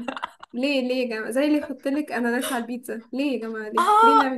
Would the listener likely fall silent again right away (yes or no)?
no